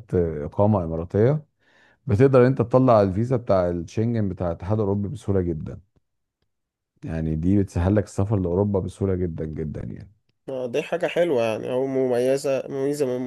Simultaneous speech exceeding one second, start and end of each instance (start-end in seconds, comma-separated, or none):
none